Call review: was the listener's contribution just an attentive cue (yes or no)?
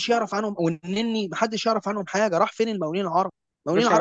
yes